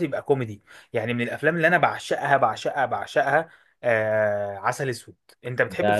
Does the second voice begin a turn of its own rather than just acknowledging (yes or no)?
yes